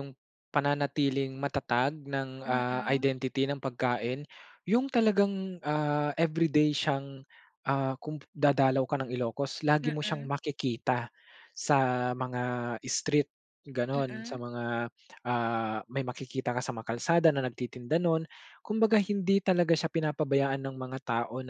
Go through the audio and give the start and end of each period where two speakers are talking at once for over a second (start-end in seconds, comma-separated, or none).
none